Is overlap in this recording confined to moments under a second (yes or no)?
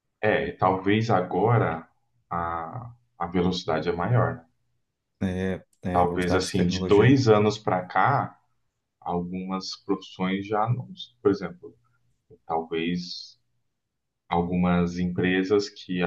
no